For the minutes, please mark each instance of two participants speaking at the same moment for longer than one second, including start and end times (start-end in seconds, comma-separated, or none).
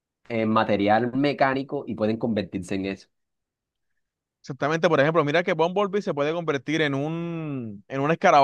none